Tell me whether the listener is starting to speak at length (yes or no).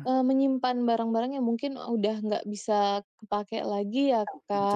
yes